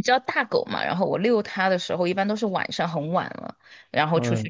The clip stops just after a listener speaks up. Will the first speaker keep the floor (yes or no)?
yes